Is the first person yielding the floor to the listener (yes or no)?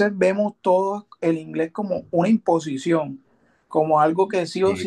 no